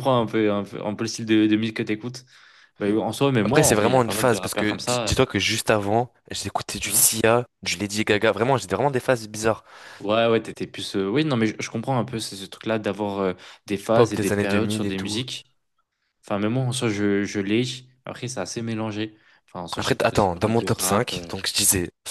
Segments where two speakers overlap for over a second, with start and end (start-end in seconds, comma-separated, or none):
3.5-5.2, 13.9-15.2, 19.8-21.3